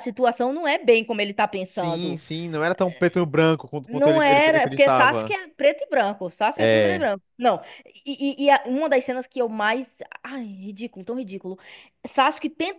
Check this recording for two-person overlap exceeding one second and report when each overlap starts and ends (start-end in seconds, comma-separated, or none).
3.9-5.4